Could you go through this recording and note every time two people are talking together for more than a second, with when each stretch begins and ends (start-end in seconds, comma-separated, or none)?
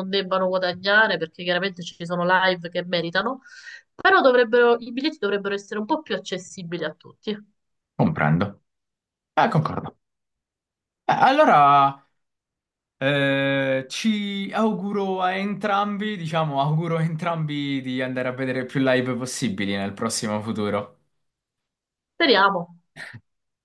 none